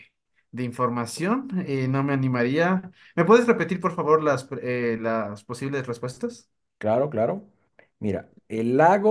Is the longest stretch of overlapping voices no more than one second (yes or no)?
yes